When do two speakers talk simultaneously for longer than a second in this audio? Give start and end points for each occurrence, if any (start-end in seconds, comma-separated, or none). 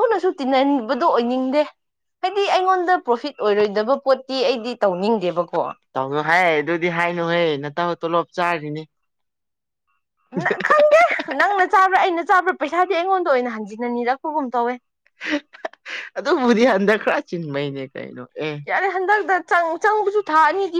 none